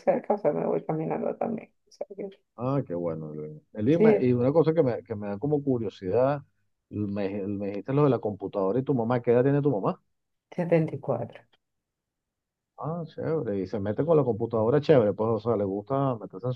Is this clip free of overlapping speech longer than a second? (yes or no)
yes